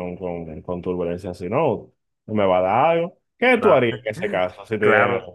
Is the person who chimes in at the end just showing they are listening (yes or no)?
no